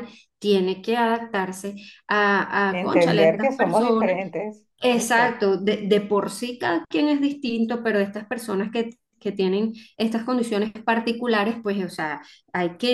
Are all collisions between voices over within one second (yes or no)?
no